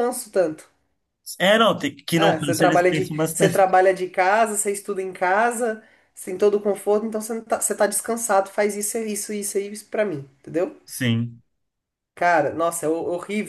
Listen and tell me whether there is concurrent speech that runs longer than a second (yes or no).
yes